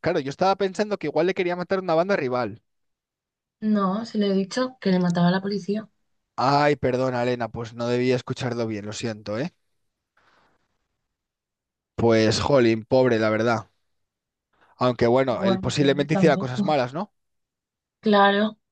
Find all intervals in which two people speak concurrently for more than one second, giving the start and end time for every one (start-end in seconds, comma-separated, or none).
15.3-16.6